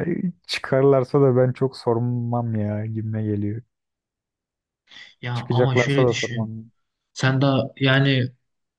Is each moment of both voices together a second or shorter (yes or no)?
no